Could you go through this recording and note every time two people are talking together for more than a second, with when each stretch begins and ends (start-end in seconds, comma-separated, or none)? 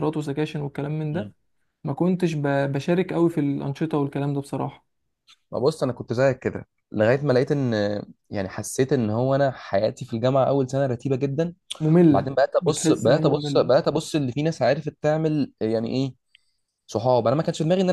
12.1-13.7